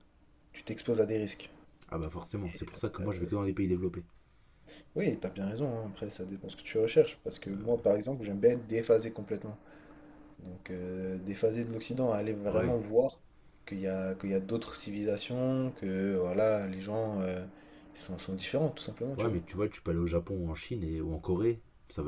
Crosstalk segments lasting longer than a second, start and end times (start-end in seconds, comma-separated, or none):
none